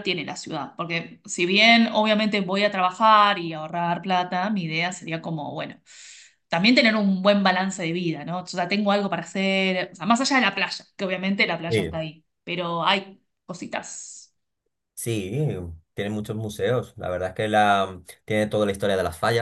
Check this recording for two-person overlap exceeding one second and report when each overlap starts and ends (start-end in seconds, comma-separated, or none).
none